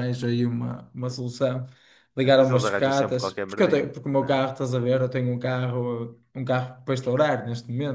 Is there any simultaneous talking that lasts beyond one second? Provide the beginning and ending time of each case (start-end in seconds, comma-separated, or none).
2.2-4.4